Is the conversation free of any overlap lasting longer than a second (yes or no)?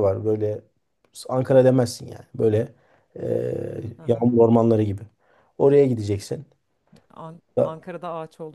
yes